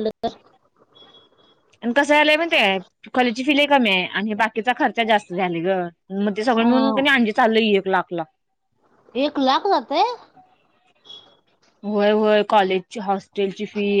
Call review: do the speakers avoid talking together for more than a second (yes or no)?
yes